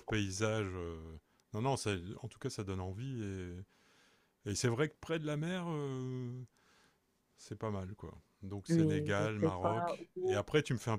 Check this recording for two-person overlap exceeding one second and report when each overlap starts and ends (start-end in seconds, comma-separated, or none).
8.7-10.4